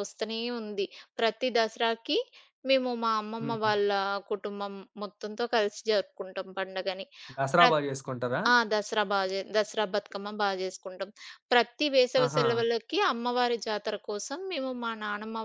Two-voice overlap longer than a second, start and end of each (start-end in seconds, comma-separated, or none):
none